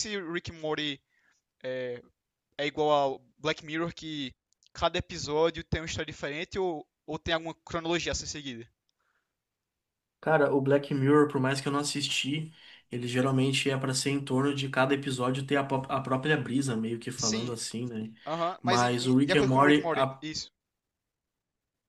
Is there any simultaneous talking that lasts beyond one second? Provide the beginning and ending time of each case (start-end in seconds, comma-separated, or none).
18.6-20.2